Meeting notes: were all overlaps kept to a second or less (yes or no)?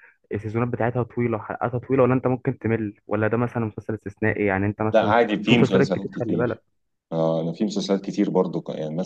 no